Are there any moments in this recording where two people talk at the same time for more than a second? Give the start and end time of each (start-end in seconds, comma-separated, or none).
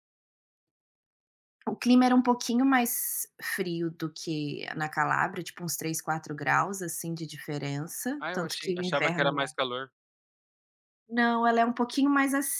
8.2-9.5